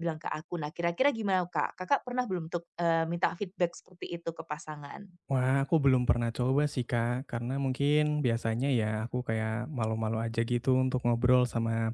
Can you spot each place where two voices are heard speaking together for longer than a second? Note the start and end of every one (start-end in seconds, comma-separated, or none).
none